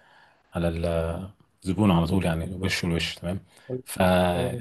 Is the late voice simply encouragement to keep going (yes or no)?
yes